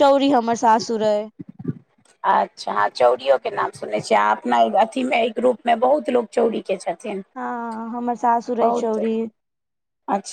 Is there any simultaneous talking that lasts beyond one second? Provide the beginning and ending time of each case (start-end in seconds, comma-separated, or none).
none